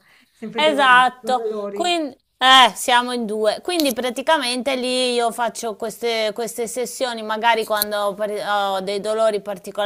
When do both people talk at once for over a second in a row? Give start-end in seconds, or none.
0.5-2.0